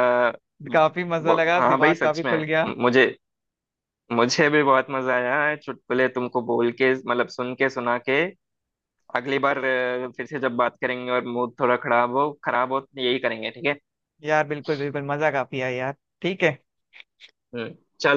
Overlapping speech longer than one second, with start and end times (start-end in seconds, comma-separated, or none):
0.7-2.4